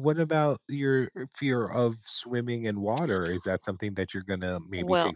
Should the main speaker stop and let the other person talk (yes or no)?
no